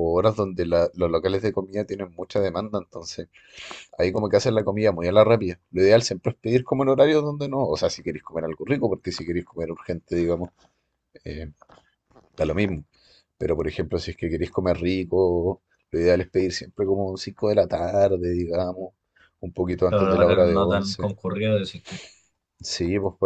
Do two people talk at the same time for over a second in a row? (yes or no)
yes